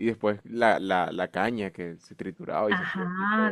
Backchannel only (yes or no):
no